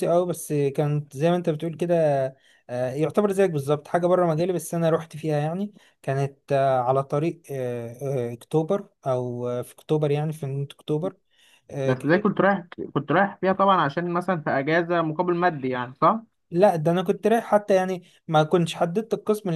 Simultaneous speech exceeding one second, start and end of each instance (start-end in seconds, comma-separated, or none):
none